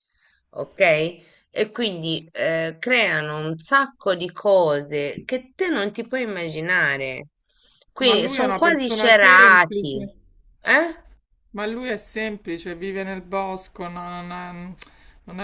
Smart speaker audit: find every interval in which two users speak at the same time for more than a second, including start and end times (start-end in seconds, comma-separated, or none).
8.0-10.0